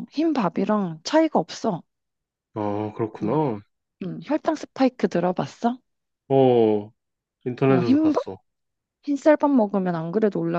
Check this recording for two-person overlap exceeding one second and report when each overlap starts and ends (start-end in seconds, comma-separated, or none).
none